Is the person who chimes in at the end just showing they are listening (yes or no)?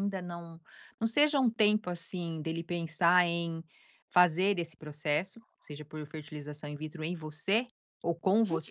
no